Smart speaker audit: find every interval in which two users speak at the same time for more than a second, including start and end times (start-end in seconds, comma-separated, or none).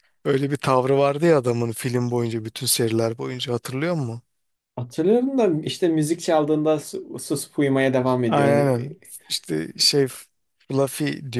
none